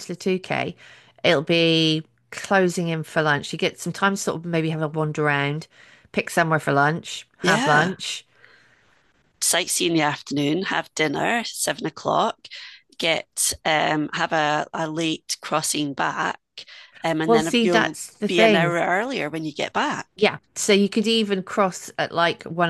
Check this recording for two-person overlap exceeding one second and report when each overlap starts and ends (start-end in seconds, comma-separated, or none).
17.3-18.7